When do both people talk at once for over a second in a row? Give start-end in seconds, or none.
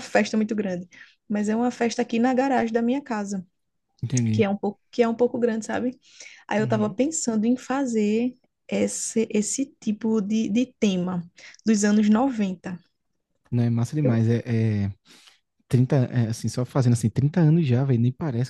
none